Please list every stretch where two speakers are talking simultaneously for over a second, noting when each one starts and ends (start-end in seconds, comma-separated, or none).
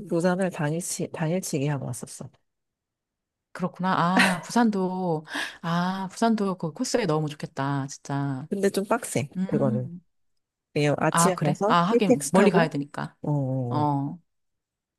11.1-12.7